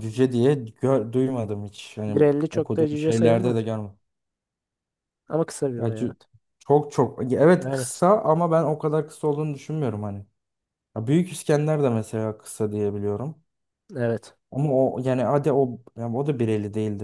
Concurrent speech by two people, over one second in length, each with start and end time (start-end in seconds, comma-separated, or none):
2.1-3.8